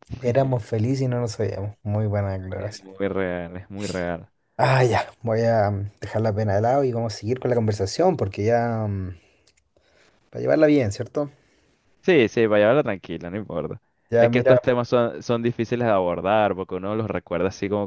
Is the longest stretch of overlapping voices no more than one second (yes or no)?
yes